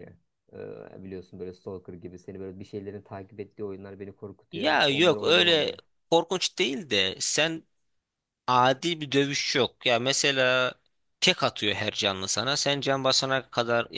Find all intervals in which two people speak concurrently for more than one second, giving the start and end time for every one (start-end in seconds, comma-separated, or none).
4.5-5.7